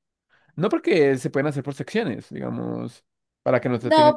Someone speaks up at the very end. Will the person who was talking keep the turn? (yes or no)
no